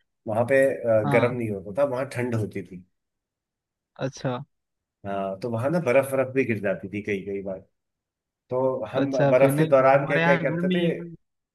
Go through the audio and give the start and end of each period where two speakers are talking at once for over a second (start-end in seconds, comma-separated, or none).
9.0-10.8